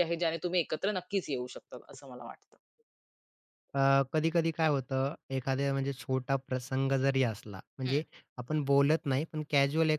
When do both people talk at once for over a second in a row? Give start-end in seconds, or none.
none